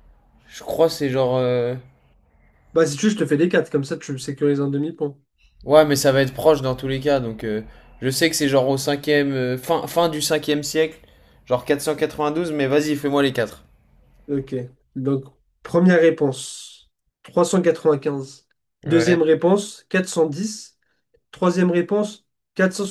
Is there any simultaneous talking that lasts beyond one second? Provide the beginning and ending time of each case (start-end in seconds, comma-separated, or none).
none